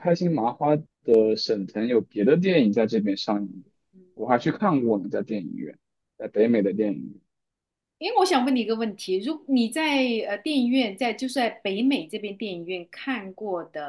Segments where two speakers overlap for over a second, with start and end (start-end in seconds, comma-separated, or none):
none